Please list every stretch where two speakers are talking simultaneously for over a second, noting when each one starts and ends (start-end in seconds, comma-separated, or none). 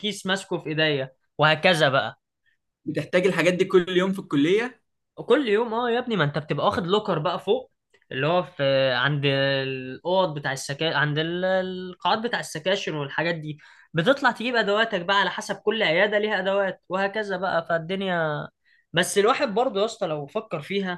none